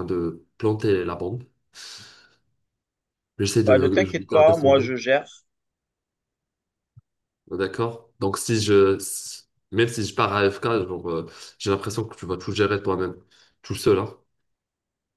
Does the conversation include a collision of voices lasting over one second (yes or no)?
yes